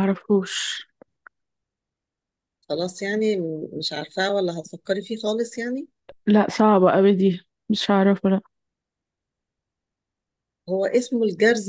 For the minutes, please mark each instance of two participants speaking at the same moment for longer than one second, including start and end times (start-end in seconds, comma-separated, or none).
none